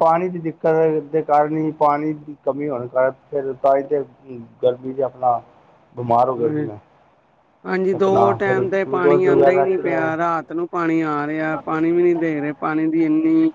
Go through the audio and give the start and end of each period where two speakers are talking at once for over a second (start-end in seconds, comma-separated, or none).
8.0-10.1